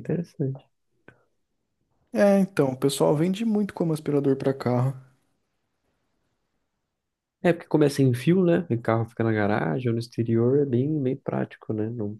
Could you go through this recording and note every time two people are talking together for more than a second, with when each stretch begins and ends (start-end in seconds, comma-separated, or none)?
none